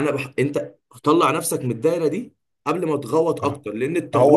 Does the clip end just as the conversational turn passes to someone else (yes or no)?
yes